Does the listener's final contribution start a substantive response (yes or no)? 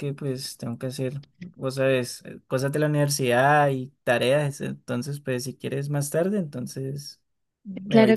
yes